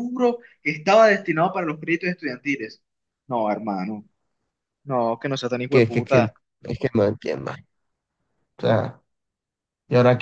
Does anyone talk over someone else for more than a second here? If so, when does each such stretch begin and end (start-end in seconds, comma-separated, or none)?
none